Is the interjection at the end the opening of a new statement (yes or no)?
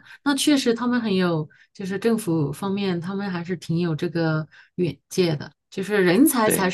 no